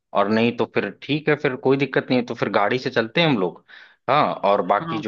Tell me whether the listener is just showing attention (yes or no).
yes